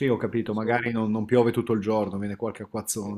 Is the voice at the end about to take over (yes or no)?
yes